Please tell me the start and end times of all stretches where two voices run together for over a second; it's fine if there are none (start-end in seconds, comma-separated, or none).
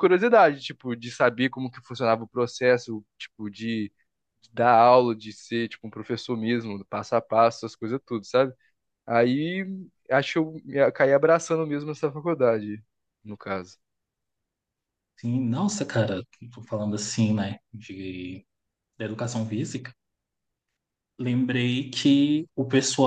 none